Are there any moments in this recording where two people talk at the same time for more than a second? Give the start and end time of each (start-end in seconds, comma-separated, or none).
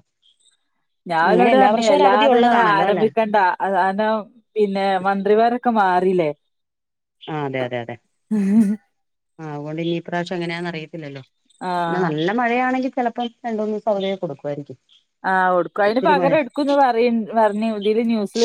1.3-3.0